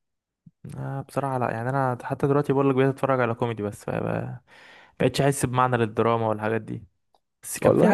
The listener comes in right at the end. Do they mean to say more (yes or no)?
no